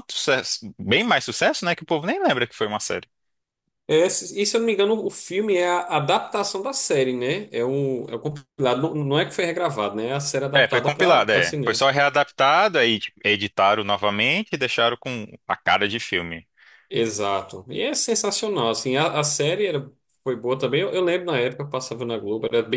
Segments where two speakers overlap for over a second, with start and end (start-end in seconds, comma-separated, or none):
10.5-11.8